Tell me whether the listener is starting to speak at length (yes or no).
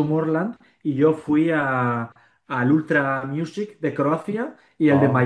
no